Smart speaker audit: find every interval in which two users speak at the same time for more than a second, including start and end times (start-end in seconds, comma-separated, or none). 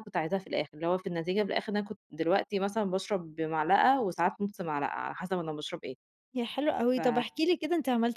none